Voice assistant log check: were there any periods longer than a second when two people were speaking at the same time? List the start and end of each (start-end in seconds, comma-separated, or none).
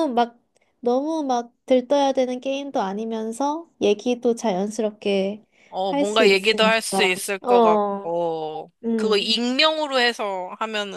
5.9-8.2